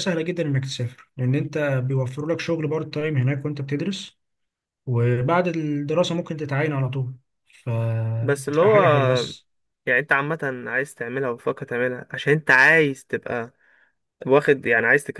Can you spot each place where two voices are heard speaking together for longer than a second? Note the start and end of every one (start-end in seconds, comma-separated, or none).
none